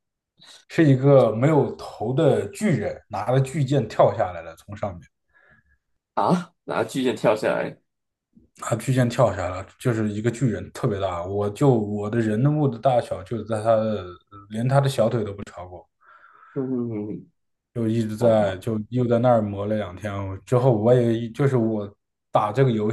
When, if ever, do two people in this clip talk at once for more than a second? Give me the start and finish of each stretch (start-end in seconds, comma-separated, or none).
none